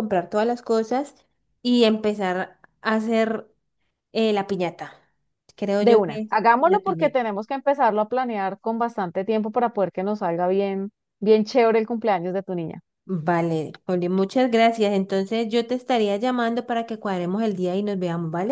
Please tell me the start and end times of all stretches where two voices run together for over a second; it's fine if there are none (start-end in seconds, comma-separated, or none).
5.8-7.2